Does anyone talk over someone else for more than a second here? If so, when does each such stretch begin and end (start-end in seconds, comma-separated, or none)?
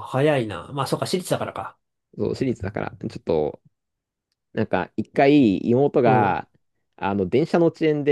none